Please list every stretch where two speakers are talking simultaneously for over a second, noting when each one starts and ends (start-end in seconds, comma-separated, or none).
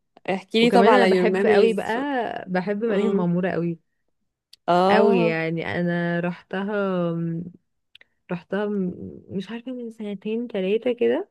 0.6-1.9